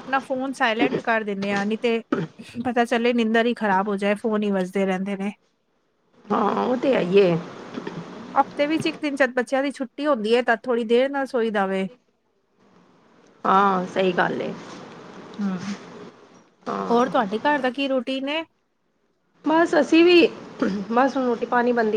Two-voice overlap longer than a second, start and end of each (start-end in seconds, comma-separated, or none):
none